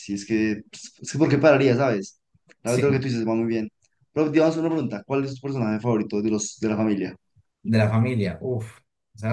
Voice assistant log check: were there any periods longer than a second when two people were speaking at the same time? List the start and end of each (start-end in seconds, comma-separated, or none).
none